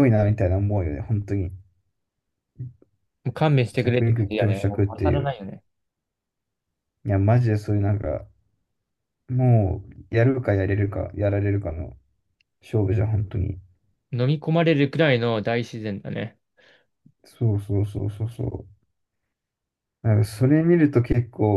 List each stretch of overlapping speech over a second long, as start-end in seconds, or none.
3.8-5.3